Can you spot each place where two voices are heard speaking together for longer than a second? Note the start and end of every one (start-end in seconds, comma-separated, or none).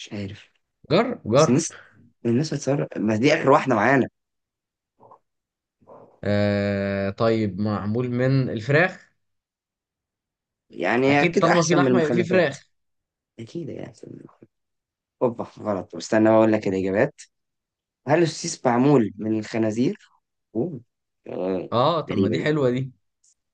11.1-12.6